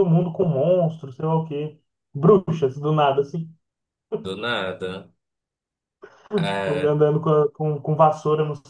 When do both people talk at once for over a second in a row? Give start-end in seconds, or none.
none